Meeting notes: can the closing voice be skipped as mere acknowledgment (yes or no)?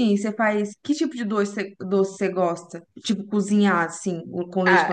no